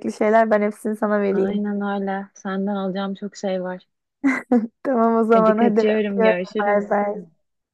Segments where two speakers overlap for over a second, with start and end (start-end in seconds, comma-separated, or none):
5.3-7.0